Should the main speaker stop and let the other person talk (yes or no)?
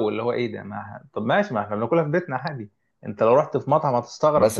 yes